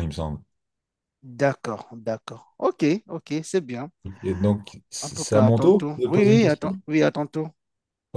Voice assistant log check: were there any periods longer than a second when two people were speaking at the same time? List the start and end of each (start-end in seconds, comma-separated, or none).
5.0-6.8